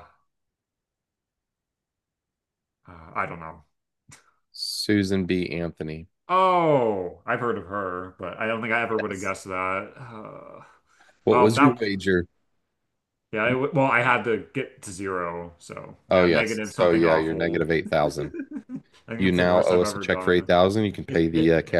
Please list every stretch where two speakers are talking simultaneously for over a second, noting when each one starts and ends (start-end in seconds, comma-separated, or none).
16.1-17.6, 19.2-20.5